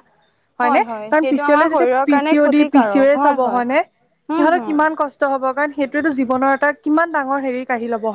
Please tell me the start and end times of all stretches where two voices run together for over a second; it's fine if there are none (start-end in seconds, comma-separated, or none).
0.6-3.6